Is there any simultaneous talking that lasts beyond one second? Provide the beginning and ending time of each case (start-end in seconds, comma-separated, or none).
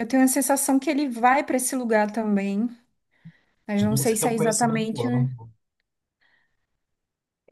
3.8-5.0